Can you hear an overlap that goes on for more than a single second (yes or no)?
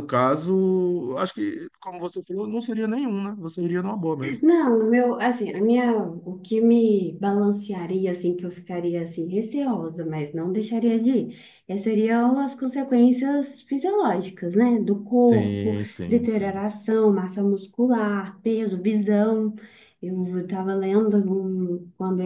yes